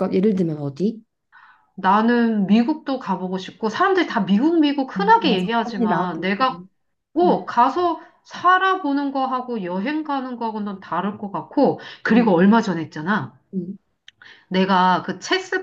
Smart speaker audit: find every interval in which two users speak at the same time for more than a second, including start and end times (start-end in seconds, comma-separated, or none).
5.0-6.5